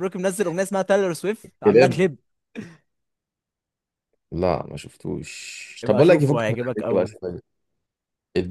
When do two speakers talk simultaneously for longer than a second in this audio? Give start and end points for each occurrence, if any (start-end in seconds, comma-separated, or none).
5.8-7.2